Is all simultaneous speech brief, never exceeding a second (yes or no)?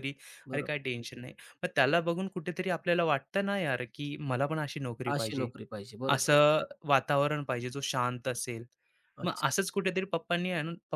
yes